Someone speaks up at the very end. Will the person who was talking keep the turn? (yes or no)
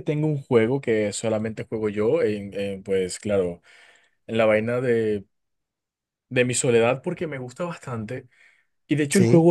yes